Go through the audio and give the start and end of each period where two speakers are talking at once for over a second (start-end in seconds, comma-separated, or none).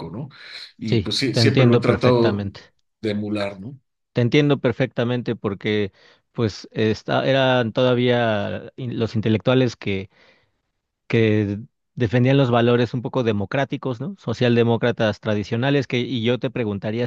0.9-2.5